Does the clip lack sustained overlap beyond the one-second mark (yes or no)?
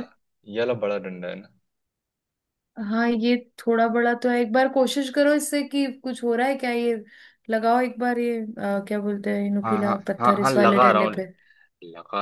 no